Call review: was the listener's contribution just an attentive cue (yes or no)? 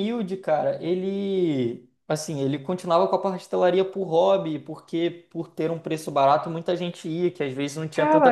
no